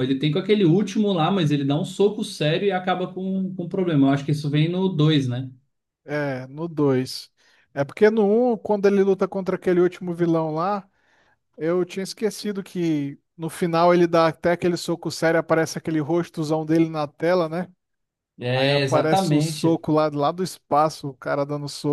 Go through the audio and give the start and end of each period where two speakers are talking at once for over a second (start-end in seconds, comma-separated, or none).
18.5-19.8